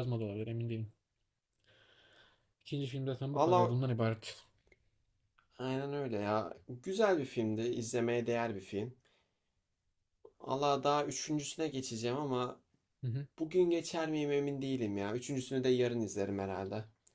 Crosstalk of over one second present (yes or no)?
no